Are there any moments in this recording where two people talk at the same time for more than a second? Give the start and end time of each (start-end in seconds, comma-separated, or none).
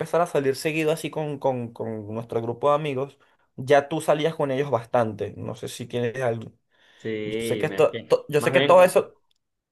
7.2-9.0